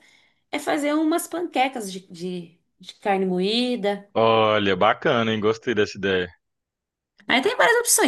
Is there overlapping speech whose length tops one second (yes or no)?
no